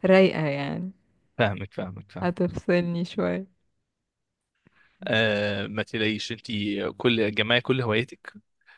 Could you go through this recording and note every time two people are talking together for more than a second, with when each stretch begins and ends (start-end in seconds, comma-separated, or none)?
none